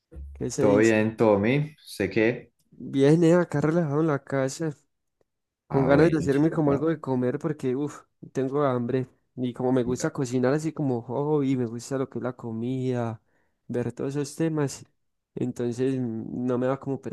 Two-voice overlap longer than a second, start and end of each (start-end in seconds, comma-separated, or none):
5.7-6.9